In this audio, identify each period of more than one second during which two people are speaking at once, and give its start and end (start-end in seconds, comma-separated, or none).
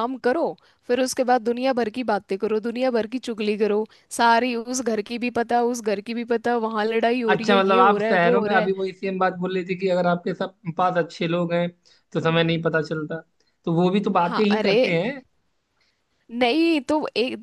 7.3-8.7